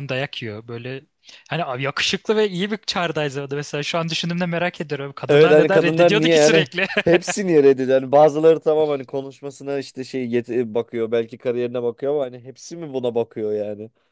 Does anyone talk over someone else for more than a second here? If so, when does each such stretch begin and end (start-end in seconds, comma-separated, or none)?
5.3-6.7